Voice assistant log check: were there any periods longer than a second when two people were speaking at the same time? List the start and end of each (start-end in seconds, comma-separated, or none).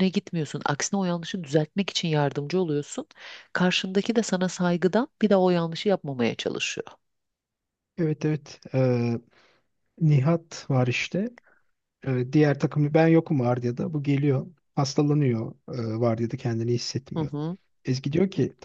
none